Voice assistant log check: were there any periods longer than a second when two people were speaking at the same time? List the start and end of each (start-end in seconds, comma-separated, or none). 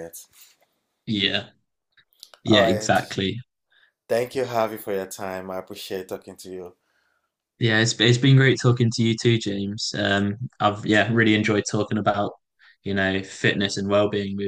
none